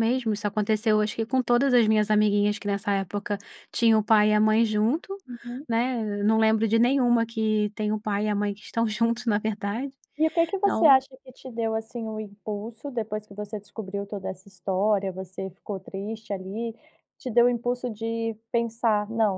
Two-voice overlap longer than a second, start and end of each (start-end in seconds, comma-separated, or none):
none